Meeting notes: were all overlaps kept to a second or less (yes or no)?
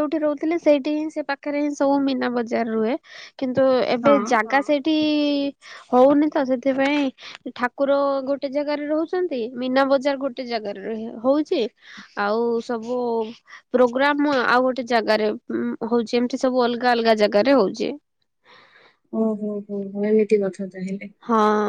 yes